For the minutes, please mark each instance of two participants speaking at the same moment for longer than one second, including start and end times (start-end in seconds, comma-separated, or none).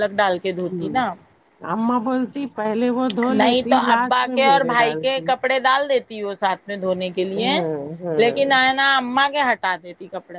3.4-5.3